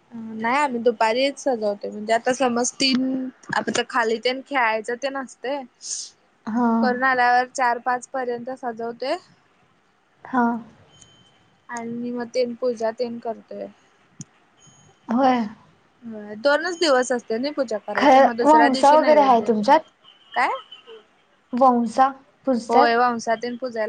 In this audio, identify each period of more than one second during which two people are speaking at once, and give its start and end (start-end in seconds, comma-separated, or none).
17.9-19.5